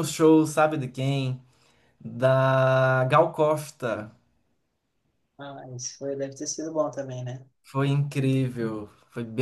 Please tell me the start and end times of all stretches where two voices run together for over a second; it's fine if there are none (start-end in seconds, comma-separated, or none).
none